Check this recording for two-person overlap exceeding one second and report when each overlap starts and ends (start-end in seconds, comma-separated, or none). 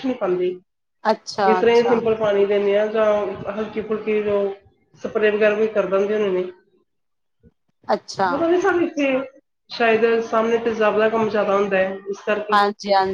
none